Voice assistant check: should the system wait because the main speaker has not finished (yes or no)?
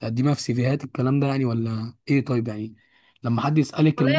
no